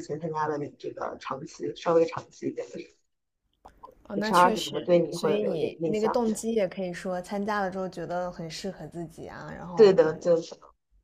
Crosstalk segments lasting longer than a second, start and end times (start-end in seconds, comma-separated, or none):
4.2-6.3